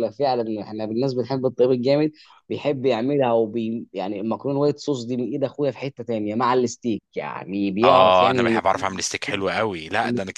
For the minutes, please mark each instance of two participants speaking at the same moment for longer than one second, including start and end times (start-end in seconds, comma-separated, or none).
7.8-9.0